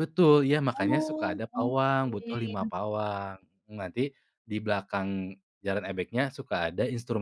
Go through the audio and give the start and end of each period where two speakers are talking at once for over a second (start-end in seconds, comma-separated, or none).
0.7-2.7